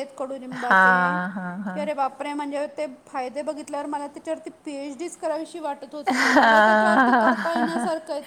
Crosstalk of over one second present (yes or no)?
yes